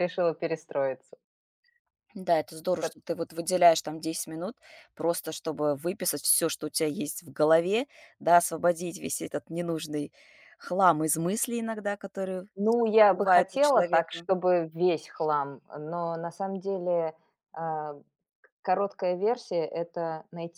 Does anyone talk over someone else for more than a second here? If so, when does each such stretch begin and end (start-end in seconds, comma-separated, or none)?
12.6-14.3